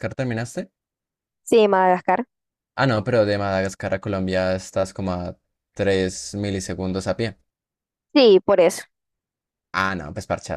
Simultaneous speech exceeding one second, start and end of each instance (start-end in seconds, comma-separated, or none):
none